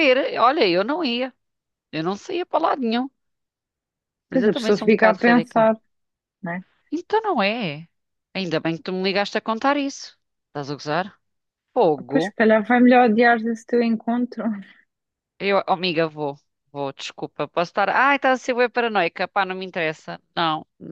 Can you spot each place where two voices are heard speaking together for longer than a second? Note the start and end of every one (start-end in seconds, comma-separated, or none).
4.3-5.7